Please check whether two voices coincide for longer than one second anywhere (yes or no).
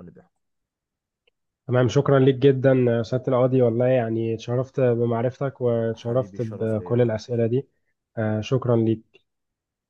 yes